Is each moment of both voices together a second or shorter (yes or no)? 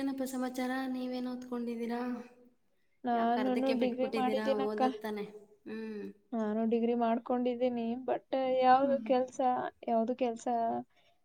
no